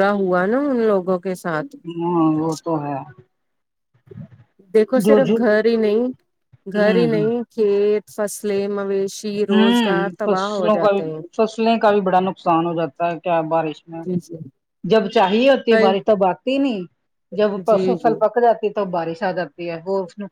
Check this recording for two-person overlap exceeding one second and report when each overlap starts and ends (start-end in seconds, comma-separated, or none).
9.5-11.0